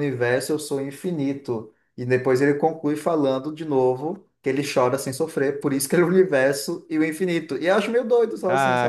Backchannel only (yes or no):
no